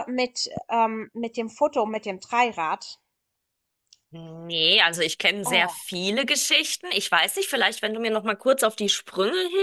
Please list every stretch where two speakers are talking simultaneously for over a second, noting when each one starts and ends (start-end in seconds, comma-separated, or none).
none